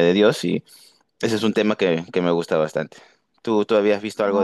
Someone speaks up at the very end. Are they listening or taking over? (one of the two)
taking over